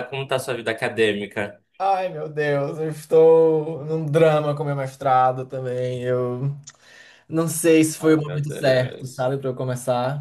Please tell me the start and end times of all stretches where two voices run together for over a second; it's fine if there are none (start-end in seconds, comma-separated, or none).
8.0-9.3